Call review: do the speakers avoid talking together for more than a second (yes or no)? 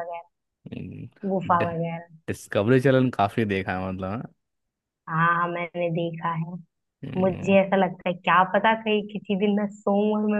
yes